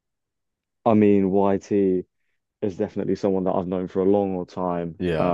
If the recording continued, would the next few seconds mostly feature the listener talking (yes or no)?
no